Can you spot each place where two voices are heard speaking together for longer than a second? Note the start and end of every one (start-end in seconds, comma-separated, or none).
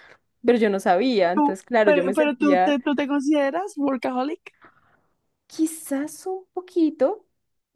1.3-2.8